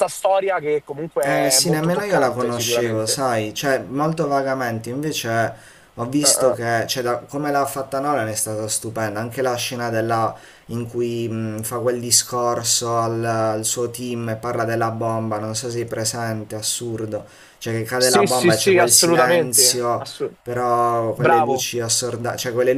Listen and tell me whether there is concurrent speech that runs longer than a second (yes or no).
yes